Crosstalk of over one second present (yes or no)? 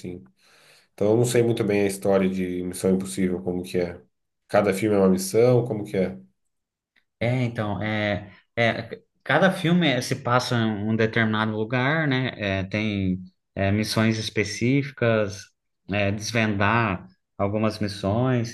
no